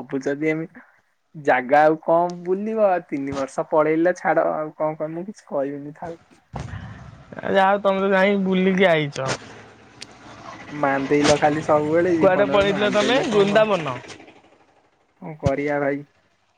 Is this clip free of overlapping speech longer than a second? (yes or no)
no